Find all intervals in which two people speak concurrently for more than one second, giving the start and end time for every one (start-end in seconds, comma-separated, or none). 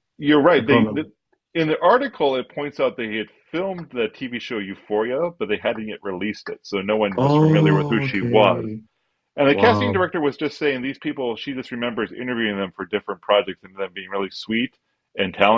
7.2-8.7